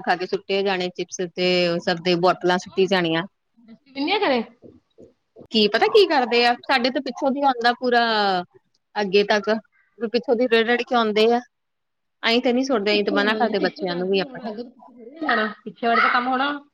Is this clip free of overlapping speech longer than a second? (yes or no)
no